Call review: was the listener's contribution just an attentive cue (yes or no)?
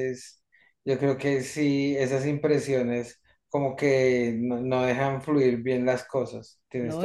no